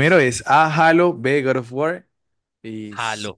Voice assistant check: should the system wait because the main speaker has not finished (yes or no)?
no